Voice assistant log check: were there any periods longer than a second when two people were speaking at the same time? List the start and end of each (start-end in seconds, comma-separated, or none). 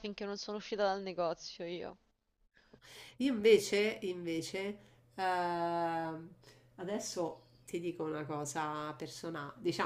none